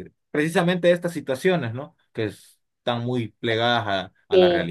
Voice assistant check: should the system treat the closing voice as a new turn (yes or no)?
yes